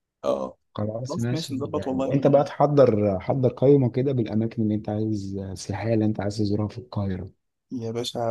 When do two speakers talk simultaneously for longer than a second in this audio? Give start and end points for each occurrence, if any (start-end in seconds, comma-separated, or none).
1.1-2.5